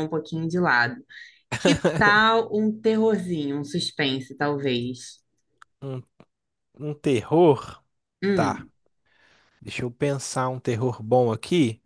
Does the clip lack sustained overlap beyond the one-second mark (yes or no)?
yes